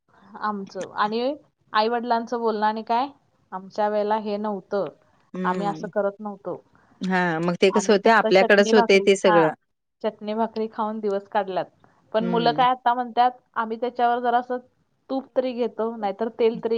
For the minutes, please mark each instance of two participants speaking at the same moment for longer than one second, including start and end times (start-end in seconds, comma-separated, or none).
7.8-9.4